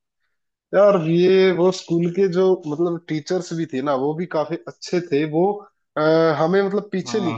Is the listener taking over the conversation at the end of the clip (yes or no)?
no